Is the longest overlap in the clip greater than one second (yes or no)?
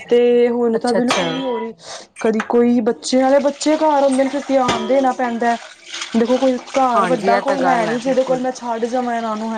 yes